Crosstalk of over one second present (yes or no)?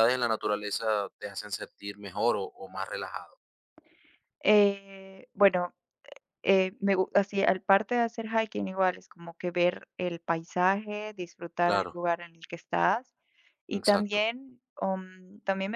no